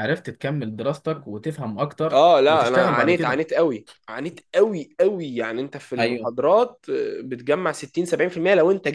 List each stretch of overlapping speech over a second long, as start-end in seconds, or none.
2.1-3.4